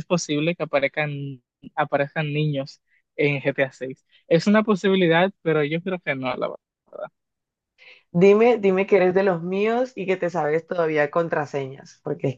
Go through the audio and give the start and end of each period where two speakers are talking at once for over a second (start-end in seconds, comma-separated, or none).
none